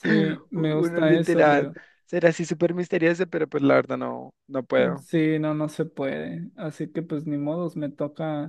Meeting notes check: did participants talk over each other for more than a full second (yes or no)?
yes